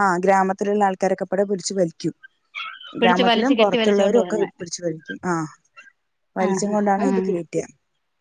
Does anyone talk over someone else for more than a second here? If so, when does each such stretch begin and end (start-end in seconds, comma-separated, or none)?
3.0-4.5